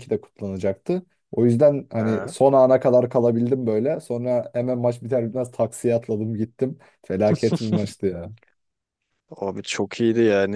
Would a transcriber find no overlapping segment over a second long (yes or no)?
yes